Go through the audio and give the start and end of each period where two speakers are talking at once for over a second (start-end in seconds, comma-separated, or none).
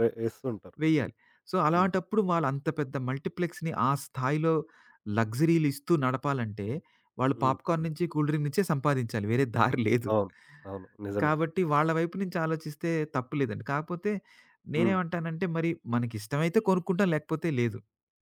none